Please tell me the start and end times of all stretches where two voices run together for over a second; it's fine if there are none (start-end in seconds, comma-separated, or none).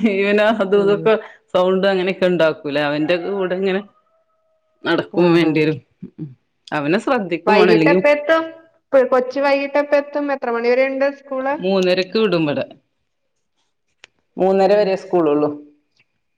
none